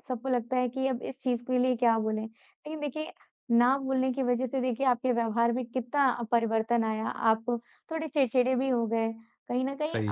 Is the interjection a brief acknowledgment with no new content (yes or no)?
yes